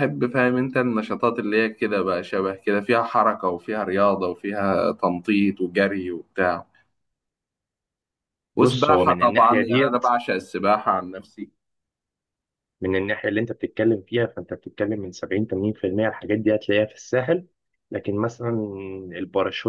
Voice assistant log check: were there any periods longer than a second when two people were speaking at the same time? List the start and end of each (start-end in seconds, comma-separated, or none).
8.6-10.0